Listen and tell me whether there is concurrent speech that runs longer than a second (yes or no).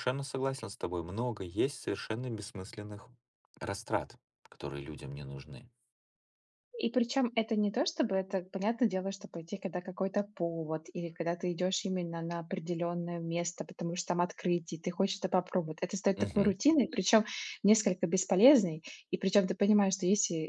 no